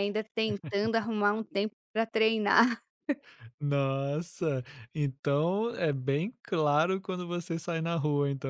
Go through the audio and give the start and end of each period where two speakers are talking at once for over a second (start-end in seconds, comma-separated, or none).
none